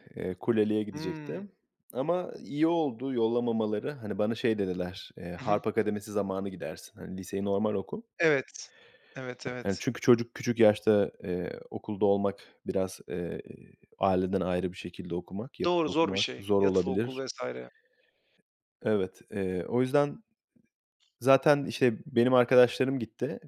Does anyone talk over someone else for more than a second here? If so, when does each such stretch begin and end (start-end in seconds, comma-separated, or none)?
15.7-17.2